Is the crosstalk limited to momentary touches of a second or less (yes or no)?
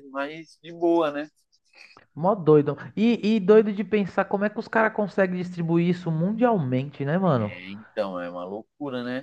yes